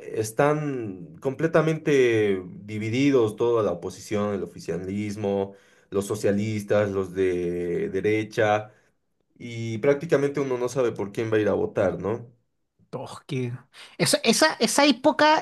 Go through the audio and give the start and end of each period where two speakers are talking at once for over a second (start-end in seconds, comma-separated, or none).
none